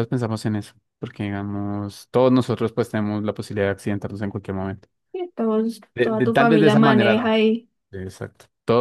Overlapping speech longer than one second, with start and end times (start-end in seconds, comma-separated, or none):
6.0-7.3